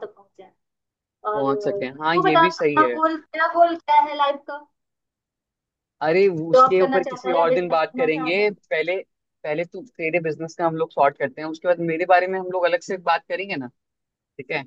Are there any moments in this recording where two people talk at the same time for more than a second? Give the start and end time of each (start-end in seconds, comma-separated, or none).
1.3-3.0, 6.5-8.5